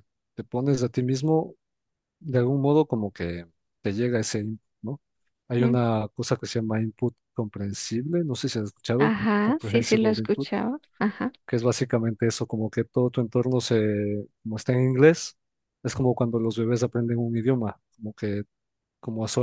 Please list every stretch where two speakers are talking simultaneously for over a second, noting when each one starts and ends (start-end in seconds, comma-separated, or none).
9.0-10.5